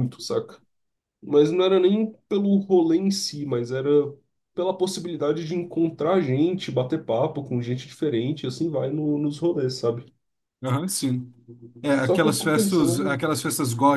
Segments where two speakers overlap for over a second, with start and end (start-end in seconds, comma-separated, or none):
12.0-13.2